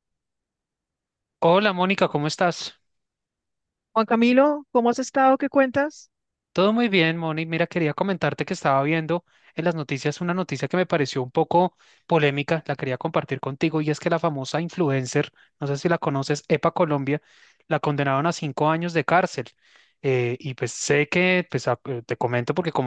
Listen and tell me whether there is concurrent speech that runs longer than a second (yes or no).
no